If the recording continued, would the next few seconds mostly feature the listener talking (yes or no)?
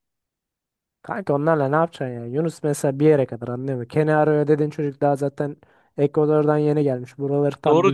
yes